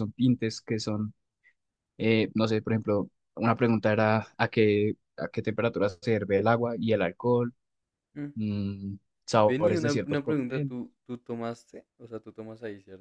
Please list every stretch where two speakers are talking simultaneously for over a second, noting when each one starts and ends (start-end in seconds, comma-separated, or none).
9.5-10.7